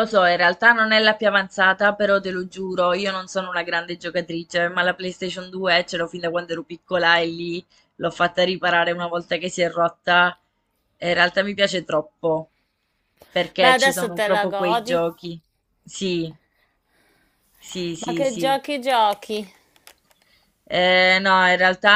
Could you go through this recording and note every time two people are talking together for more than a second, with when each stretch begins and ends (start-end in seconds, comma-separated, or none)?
13.6-15.0